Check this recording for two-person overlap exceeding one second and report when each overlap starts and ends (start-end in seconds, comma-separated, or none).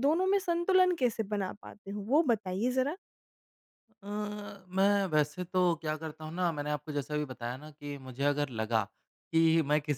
none